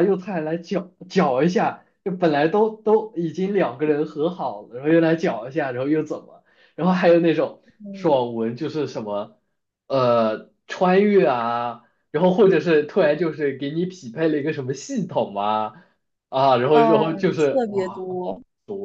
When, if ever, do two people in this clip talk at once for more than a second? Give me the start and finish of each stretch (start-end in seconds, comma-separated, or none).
16.7-18.1